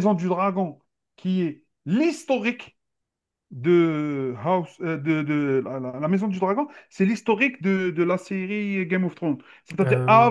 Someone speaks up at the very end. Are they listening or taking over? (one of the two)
listening